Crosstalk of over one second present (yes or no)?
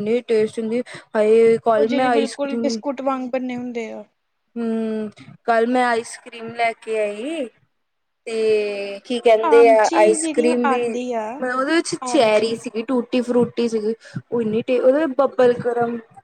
yes